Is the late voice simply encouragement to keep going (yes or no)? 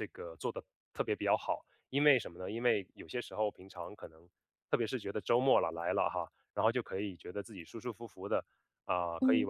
yes